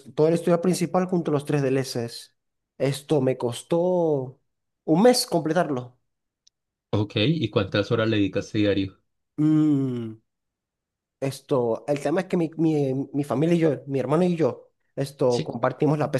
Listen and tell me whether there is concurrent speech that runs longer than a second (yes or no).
no